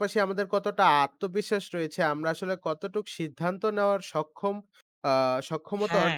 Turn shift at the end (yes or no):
no